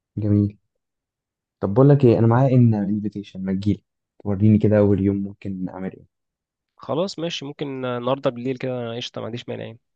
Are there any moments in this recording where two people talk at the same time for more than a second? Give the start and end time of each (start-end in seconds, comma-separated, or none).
none